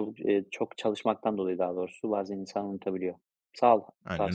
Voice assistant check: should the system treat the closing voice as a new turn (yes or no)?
yes